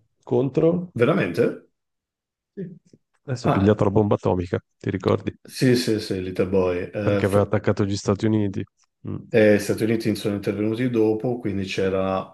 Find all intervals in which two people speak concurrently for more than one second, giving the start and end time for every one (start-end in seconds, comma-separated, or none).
none